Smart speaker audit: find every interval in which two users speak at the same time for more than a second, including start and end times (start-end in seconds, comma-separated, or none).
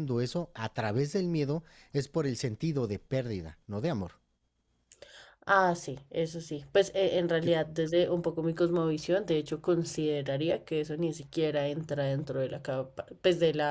none